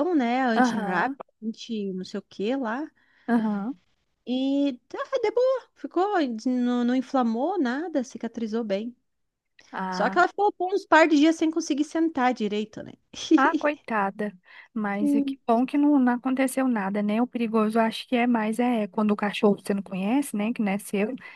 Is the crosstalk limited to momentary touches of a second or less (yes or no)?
yes